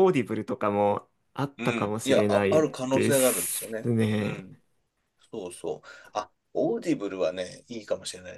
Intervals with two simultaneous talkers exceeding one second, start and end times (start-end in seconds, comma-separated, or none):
1.6-4.4